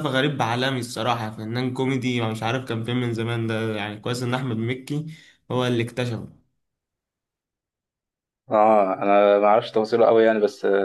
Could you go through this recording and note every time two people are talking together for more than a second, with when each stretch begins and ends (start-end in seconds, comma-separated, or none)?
none